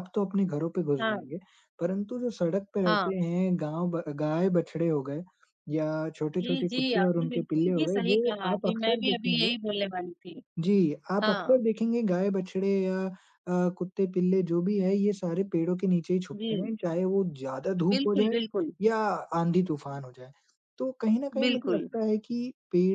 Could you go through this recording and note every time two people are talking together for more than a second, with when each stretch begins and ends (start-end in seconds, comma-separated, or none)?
6.4-9.5